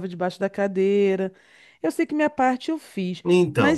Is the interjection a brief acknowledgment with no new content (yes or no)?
no